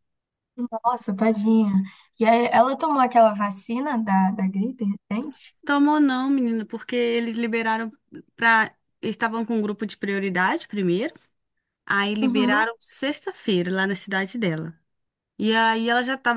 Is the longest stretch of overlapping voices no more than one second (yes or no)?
yes